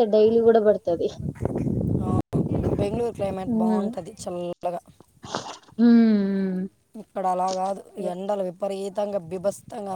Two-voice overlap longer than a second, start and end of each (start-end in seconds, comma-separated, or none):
none